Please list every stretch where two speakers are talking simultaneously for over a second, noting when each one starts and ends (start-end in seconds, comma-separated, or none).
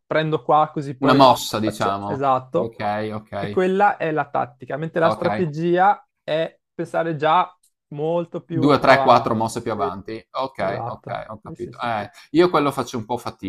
1.0-2.8, 8.5-9.9, 10.6-12.1